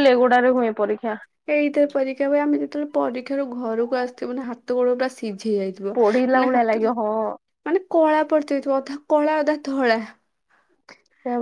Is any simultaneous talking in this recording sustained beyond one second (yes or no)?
no